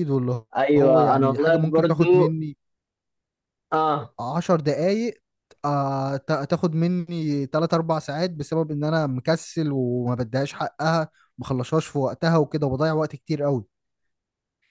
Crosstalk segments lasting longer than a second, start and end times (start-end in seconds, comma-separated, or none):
0.6-2.4